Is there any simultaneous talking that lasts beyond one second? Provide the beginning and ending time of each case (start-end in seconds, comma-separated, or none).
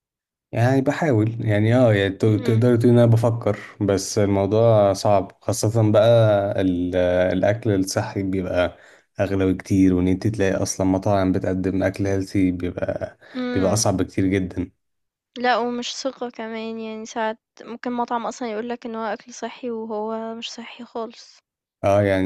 none